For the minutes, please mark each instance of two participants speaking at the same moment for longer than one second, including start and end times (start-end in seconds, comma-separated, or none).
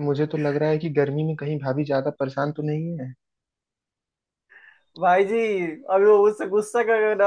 none